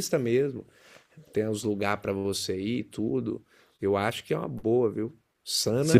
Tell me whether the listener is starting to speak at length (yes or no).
no